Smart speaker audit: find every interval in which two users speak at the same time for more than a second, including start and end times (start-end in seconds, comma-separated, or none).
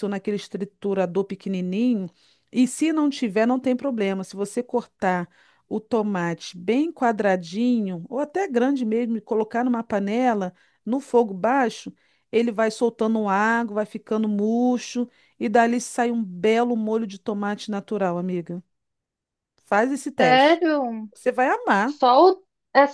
none